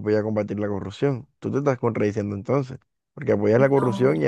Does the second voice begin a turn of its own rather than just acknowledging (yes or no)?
no